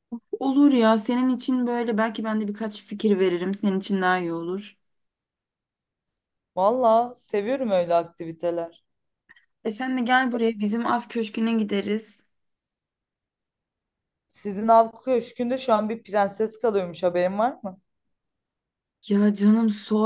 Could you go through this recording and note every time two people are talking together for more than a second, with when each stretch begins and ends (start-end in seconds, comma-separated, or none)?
none